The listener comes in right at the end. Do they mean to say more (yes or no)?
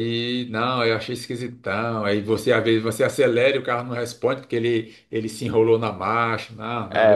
yes